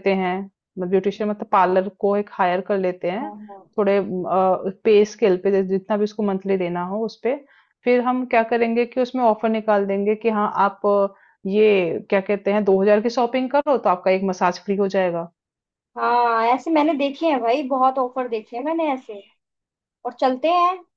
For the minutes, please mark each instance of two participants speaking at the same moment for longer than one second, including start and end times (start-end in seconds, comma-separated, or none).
none